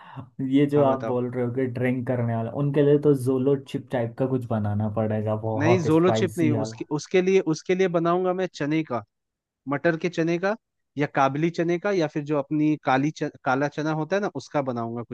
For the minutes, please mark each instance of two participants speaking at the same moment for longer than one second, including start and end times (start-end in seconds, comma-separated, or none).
5.6-6.8